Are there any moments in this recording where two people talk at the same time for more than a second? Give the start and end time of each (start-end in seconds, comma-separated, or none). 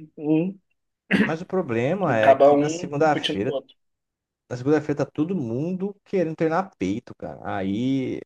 2.1-3.6